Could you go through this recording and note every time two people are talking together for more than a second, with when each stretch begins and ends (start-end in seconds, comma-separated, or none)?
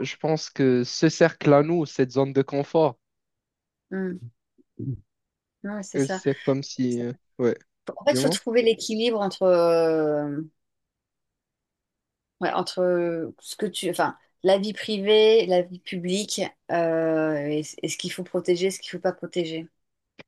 none